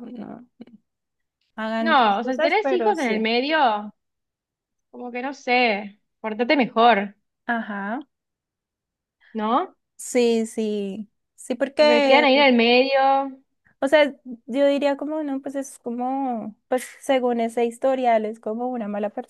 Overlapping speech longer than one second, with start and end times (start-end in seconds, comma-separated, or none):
1.8-3.3